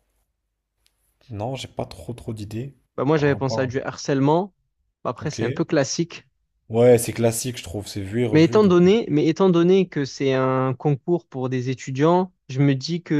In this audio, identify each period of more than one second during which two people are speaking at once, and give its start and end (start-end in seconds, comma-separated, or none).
none